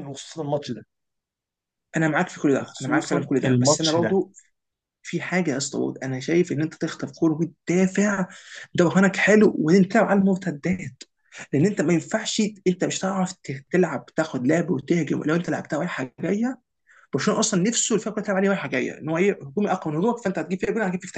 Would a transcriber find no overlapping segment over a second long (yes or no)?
no